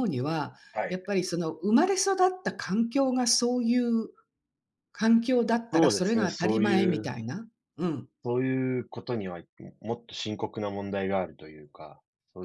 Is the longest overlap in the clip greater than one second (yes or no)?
yes